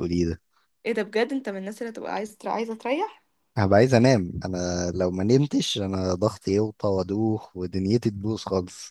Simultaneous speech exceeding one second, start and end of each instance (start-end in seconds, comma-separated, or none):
none